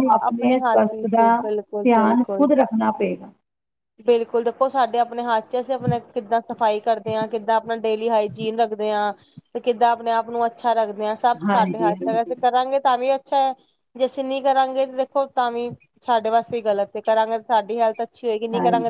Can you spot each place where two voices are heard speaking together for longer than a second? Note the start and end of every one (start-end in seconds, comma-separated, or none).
0.7-2.5